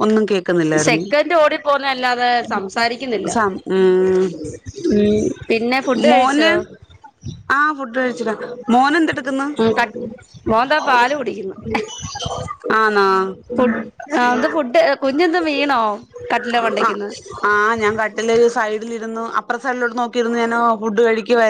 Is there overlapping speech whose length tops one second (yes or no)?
no